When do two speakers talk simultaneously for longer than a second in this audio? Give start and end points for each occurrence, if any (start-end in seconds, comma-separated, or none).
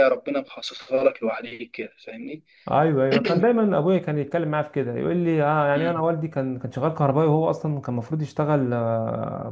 none